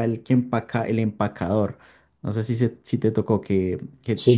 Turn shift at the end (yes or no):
yes